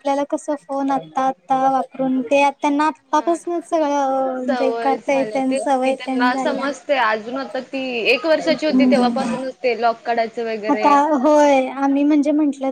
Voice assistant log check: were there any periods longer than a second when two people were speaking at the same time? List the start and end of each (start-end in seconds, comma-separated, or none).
4.5-6.7